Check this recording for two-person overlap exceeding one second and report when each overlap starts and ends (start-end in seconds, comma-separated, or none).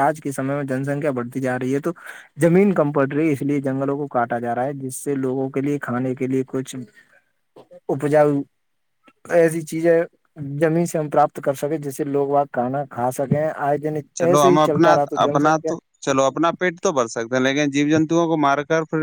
none